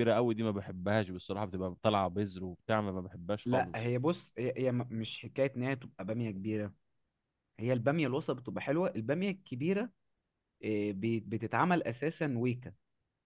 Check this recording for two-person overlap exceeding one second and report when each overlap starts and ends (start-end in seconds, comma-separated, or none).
none